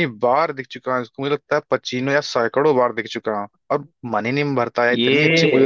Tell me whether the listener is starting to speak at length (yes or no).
yes